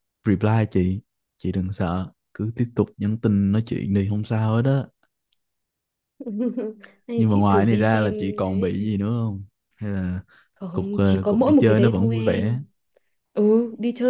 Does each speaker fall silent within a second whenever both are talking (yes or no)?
no